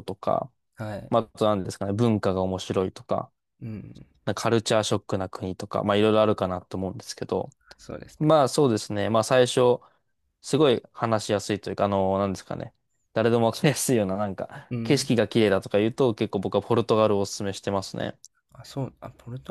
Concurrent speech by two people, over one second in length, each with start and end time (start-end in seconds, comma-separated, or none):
none